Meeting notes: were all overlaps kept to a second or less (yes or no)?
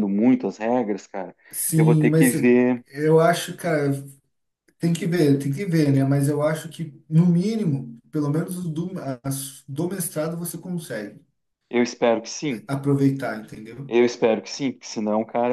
yes